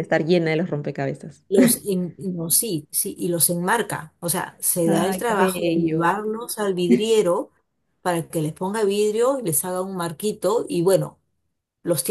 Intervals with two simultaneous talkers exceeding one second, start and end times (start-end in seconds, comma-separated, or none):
4.9-6.2